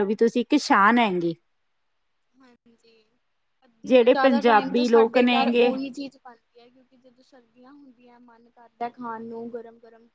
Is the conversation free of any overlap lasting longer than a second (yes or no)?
no